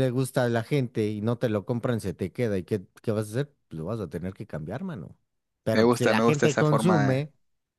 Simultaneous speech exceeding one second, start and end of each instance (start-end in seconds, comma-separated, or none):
5.7-7.3